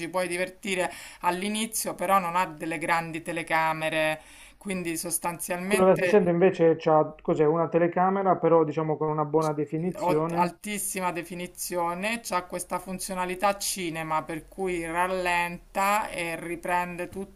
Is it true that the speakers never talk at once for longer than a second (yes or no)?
yes